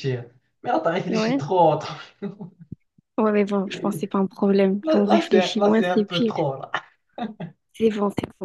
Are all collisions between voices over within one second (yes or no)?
no